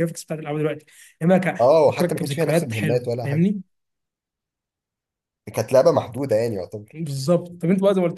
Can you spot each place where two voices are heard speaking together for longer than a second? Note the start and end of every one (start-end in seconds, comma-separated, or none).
1.6-3.5